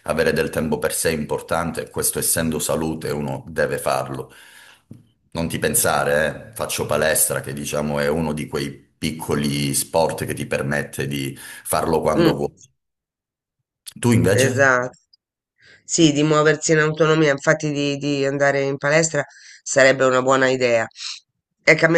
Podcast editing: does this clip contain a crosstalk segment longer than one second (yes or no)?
no